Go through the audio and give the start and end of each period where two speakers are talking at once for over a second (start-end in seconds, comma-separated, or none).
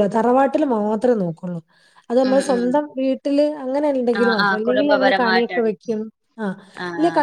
4.2-5.7